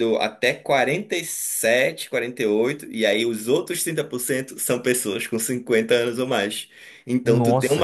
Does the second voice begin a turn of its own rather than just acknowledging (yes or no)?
no